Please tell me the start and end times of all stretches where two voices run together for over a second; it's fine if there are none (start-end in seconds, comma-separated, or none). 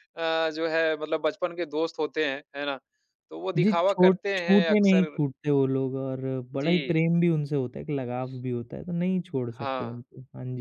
3.6-5.2